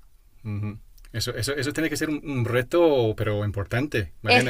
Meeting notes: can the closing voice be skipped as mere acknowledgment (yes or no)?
no